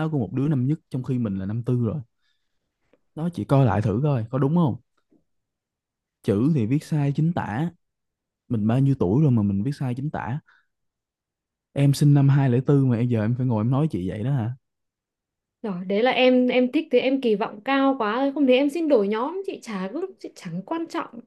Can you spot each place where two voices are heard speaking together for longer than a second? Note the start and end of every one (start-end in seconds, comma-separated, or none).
none